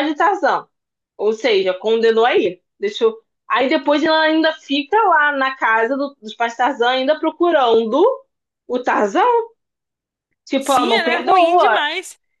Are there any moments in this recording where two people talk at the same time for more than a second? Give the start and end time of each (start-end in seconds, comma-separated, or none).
10.6-11.8